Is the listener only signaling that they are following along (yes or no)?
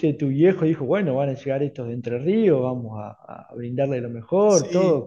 yes